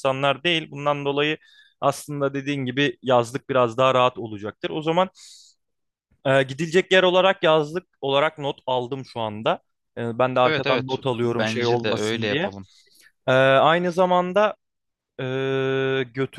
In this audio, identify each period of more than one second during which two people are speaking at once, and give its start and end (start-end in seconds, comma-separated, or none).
10.4-12.5